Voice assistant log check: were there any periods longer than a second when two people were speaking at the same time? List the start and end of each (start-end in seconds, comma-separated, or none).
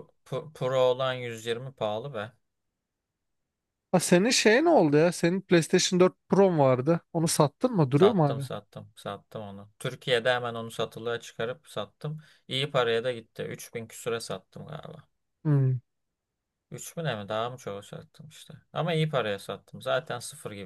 none